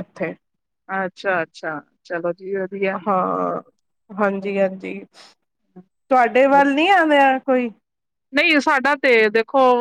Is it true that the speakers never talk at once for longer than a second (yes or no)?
yes